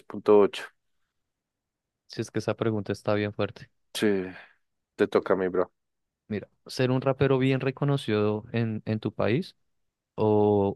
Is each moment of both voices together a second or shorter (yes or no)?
yes